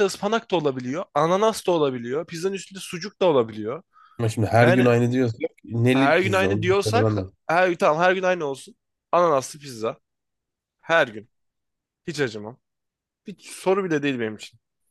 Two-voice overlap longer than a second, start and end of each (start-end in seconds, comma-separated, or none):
5.9-7.3